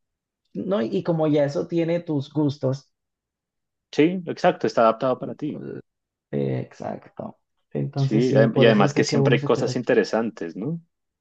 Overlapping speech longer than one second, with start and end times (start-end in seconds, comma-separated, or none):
8.0-9.8